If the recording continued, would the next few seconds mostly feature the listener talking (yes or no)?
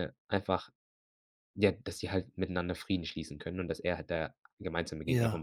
no